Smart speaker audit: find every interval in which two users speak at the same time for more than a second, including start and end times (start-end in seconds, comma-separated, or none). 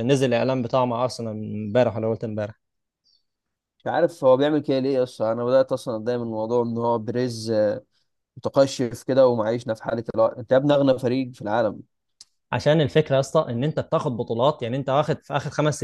none